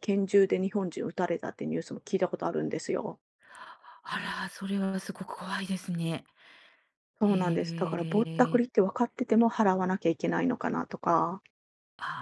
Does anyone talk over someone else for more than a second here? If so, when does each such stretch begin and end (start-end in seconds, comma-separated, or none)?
7.2-8.6